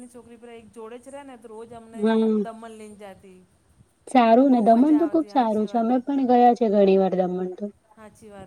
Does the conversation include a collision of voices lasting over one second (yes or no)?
yes